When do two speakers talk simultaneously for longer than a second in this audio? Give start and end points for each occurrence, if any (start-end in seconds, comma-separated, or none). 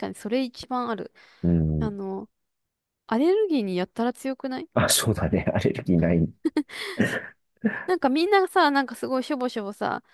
none